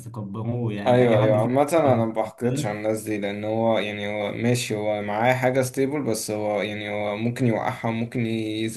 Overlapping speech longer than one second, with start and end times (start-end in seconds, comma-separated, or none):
0.9-2.1